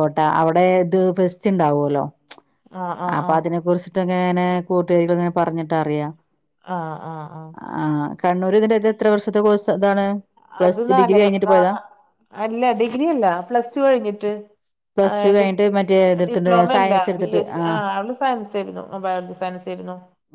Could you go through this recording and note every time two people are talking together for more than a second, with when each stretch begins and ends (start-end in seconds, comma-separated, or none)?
15.1-17.8